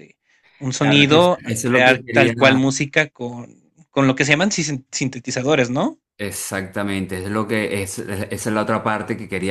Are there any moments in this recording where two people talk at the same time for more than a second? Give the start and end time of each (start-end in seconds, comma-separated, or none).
0.8-2.6